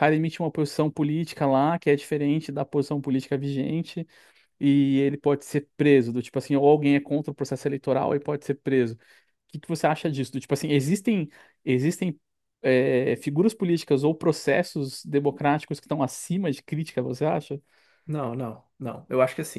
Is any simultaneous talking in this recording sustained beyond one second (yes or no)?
no